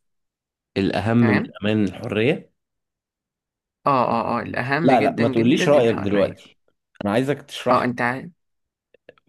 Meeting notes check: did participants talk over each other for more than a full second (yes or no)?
yes